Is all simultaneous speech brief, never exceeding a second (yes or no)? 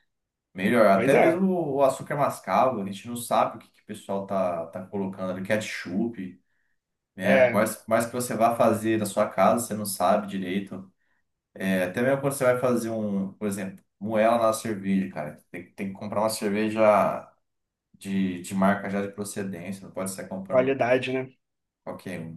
yes